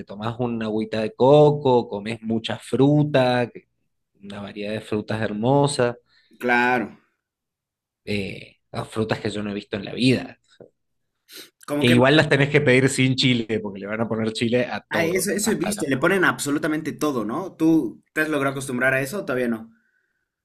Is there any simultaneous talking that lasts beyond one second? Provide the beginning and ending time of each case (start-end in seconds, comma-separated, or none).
14.9-16.2